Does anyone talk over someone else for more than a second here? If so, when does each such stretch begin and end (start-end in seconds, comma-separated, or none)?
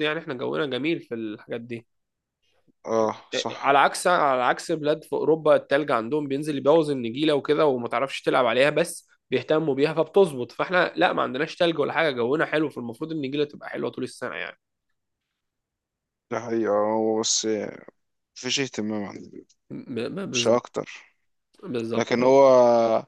none